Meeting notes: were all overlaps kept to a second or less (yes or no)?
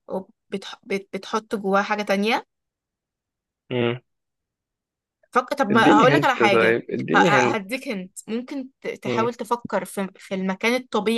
no